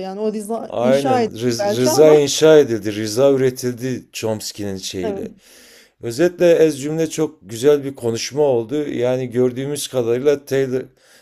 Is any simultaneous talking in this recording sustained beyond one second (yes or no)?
yes